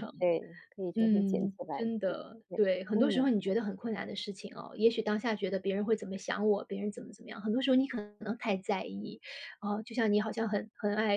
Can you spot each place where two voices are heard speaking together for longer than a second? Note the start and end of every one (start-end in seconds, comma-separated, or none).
1.0-3.3